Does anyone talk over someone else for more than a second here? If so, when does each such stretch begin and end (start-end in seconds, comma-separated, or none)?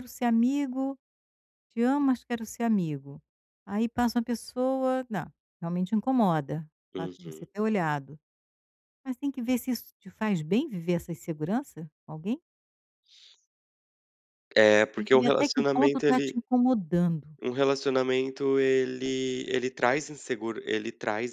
15.0-16.4